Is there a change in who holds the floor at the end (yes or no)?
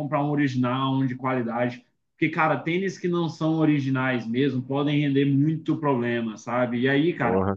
no